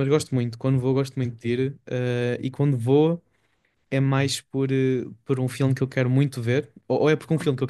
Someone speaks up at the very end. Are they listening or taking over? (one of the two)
listening